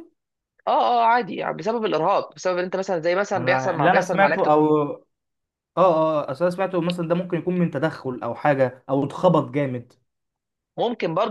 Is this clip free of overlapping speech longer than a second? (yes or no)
no